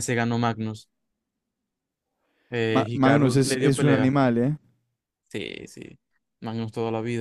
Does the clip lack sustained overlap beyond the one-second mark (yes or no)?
no